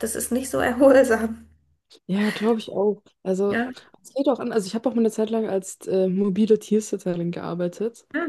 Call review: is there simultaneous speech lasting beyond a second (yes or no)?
no